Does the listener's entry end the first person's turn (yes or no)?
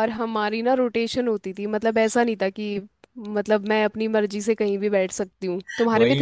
yes